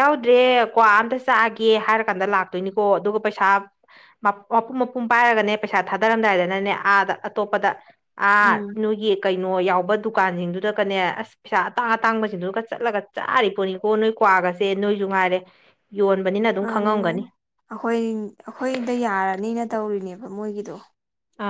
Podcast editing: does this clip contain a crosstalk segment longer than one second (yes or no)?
no